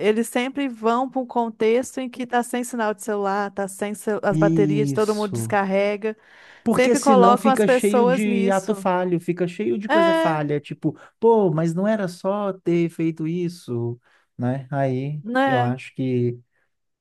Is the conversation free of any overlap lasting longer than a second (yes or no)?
no